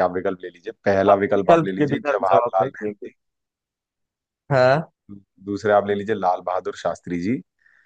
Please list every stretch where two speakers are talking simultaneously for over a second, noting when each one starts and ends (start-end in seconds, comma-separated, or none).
1.1-3.1